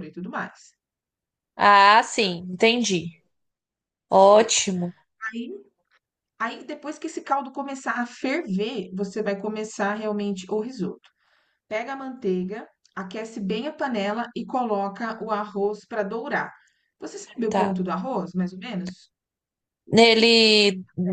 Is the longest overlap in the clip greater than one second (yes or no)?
no